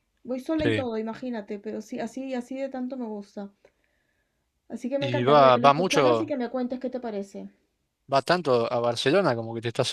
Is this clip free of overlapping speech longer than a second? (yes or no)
no